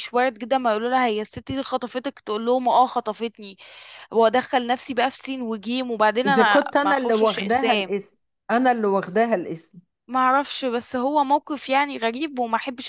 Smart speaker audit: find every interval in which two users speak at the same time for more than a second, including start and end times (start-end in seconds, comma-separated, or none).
6.2-7.9